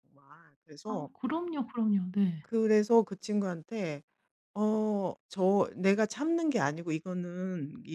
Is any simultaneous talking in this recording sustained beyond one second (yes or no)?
no